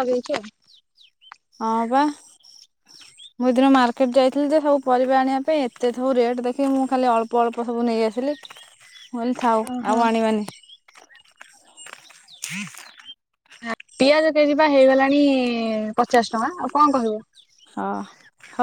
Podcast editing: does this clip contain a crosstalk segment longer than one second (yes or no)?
no